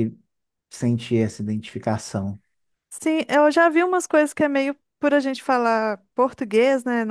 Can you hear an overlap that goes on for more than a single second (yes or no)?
no